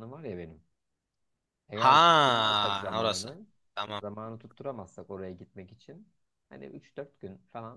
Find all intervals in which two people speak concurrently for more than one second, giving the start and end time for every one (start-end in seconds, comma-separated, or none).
1.7-3.3